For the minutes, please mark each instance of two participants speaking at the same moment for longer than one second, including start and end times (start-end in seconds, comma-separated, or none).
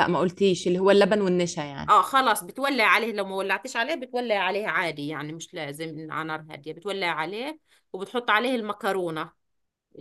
none